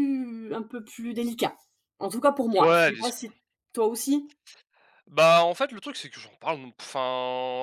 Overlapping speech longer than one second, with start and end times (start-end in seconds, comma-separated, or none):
none